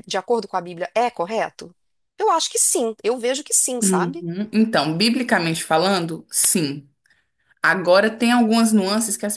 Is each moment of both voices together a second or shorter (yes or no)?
yes